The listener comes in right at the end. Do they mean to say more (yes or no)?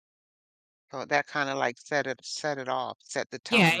yes